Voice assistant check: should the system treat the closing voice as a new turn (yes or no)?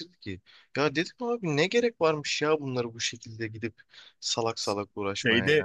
yes